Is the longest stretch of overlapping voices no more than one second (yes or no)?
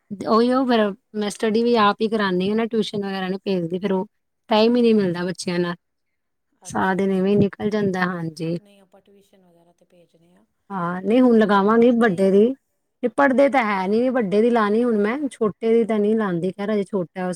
no